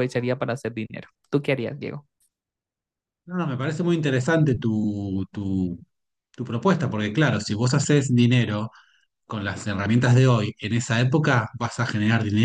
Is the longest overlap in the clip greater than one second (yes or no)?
no